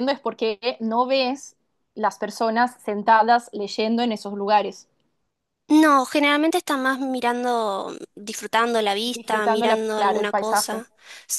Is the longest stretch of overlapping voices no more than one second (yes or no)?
no